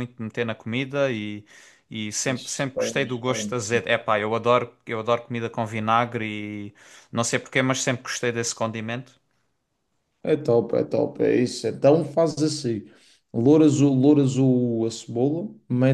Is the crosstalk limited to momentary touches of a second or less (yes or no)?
yes